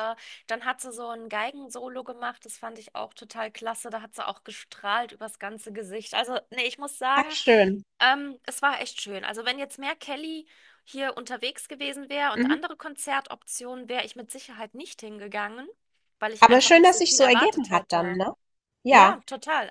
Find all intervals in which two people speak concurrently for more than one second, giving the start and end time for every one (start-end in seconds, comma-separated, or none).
16.4-18.2